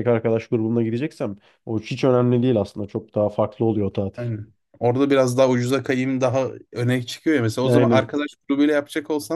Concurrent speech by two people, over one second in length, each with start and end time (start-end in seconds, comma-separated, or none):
none